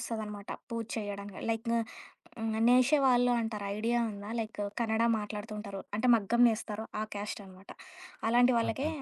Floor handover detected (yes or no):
no